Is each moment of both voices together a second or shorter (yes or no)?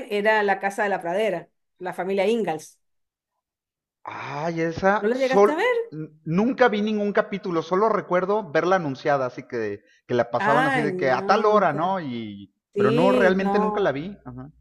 no